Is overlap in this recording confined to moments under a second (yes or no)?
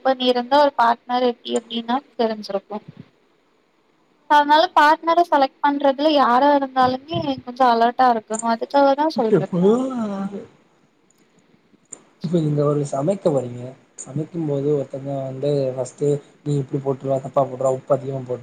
yes